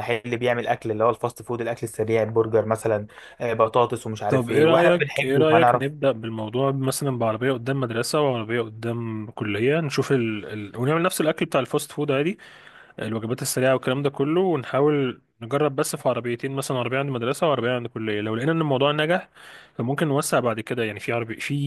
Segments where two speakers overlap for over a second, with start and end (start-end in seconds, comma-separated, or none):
4.3-5.9